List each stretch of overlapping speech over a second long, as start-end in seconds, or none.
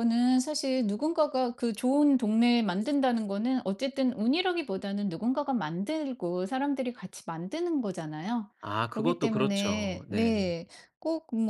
8.9-10.6